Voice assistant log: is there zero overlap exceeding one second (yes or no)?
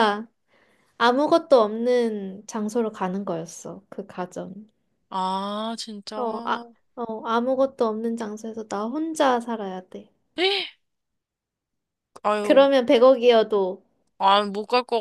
yes